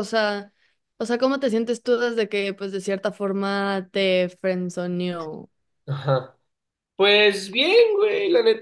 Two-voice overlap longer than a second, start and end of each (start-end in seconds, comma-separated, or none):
none